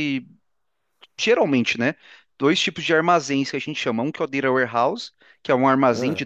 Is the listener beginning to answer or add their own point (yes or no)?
no